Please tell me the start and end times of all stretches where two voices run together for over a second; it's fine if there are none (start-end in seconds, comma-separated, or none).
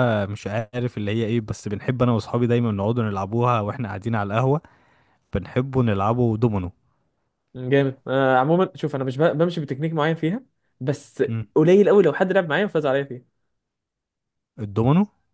none